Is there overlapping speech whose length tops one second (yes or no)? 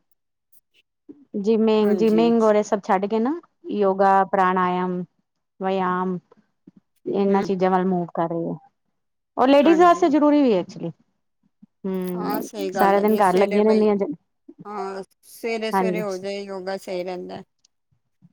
yes